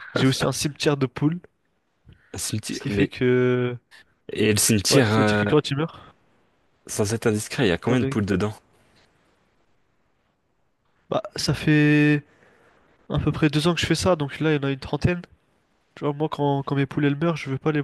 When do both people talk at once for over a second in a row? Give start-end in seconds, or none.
none